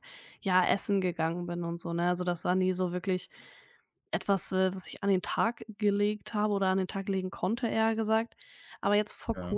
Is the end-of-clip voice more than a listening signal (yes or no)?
no